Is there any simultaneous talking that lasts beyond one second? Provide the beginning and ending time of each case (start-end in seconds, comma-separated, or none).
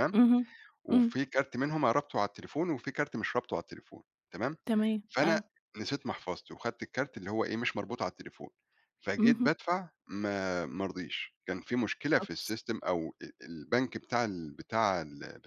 none